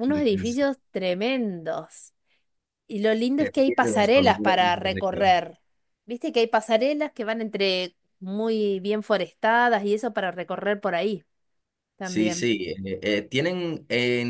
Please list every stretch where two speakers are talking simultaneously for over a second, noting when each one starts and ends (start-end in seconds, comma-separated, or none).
3.4-5.3